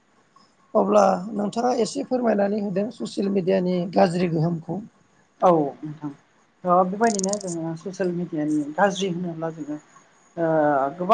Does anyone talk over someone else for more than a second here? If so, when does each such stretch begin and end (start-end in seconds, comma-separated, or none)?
none